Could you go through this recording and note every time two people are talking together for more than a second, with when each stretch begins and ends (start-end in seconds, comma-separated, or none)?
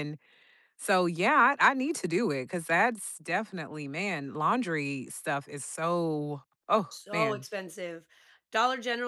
none